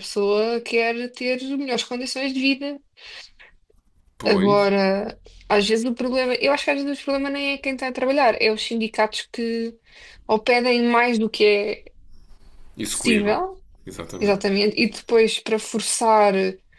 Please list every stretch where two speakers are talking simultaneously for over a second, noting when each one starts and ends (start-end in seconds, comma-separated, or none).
none